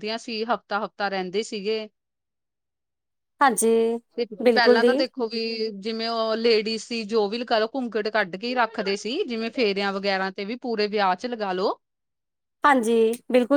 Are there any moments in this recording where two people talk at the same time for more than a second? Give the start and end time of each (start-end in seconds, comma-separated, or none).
none